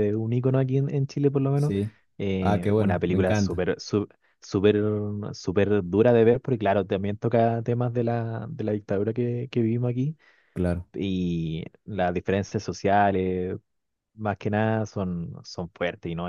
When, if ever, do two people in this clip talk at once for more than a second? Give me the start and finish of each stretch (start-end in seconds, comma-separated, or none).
2.4-3.6